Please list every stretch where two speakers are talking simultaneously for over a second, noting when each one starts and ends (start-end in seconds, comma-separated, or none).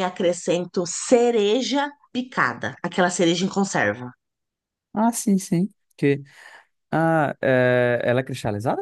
none